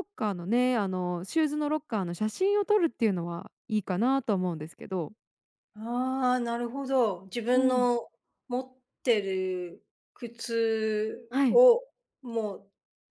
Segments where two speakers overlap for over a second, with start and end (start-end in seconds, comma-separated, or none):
none